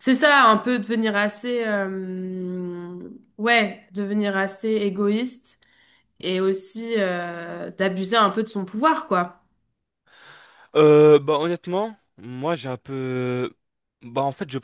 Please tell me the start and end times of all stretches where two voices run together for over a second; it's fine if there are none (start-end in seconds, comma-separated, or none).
none